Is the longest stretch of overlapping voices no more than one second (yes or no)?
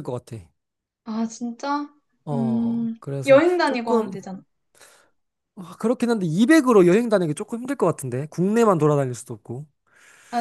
no